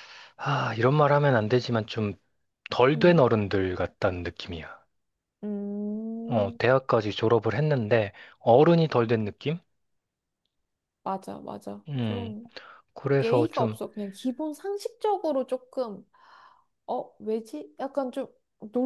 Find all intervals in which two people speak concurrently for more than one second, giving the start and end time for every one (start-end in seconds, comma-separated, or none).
none